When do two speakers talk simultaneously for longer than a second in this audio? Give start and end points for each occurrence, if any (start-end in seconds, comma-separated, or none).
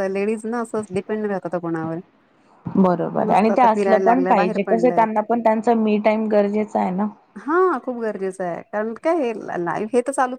3.3-5.0